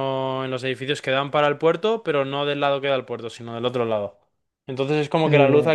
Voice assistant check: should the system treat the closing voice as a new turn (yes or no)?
no